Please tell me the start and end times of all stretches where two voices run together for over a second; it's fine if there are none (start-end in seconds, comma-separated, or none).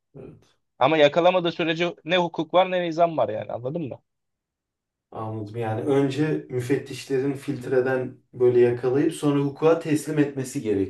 none